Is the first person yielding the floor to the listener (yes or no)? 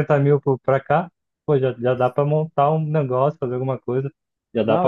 yes